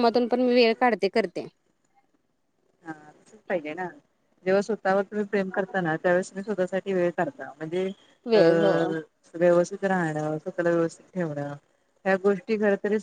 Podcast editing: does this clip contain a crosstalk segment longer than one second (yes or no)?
no